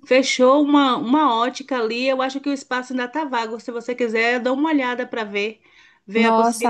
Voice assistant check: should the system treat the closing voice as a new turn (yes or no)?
no